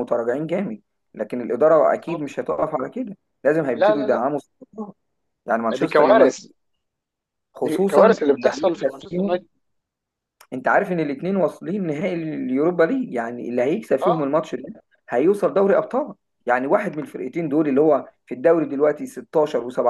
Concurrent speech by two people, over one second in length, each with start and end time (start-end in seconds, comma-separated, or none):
7.6-9.4